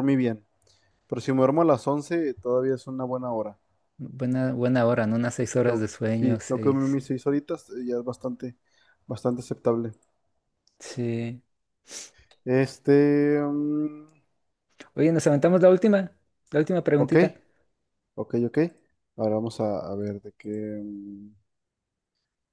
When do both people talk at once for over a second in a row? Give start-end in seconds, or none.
5.5-7.0